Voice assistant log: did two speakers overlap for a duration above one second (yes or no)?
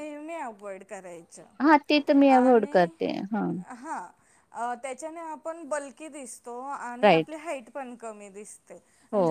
no